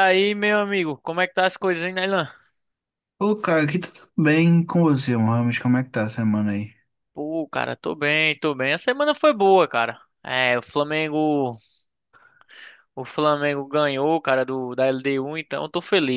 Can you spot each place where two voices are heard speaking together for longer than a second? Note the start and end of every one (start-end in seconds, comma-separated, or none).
none